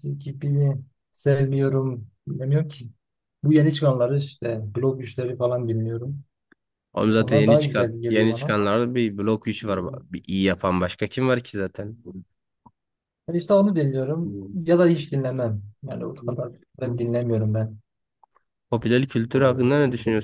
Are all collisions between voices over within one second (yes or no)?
no